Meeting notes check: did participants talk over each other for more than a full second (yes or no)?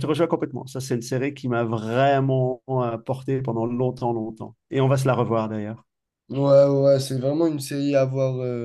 no